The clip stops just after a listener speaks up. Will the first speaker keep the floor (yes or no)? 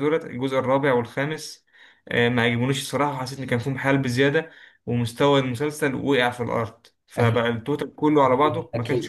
no